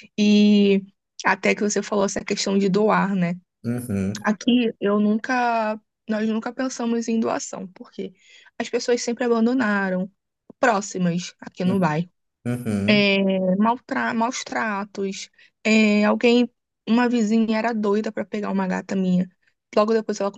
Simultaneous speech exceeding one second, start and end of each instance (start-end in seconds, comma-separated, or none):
none